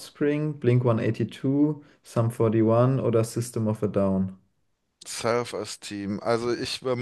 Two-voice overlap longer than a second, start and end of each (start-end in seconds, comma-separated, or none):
none